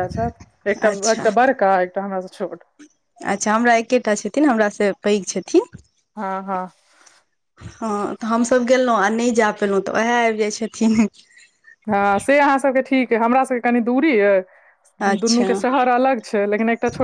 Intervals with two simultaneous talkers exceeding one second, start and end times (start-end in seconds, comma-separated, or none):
none